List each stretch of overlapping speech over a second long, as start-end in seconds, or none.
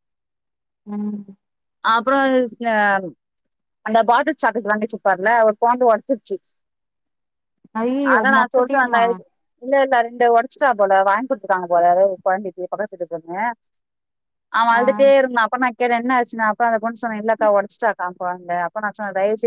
none